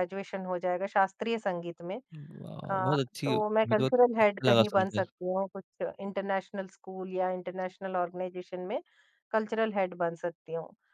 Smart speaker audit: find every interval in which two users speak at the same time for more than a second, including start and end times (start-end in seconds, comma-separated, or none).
2.7-5.1